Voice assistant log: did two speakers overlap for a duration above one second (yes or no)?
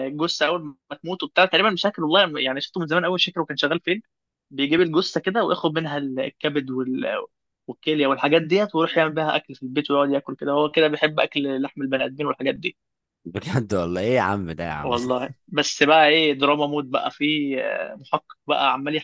no